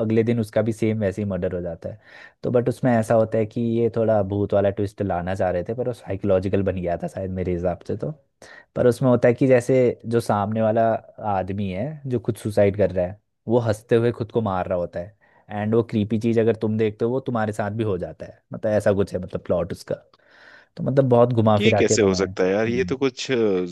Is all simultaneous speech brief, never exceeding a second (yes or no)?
no